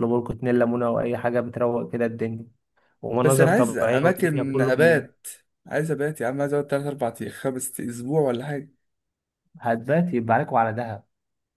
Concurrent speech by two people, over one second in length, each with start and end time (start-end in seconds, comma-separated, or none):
3.2-5.1